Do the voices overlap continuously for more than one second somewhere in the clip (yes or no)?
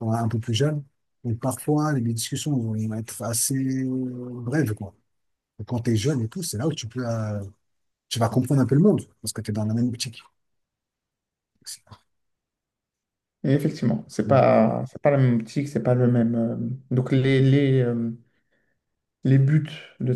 no